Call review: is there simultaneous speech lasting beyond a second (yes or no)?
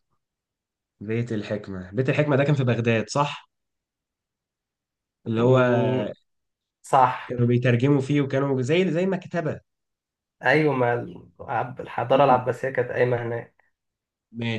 no